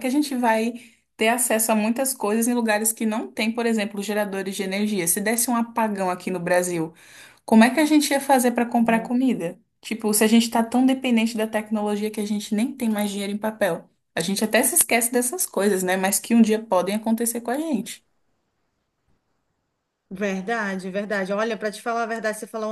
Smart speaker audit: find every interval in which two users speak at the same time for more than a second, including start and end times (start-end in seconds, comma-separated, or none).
none